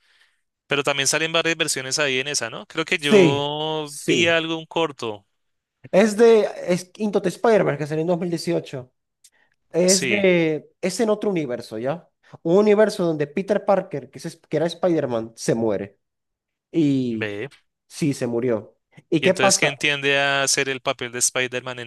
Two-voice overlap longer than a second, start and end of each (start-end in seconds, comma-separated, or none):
2.9-4.4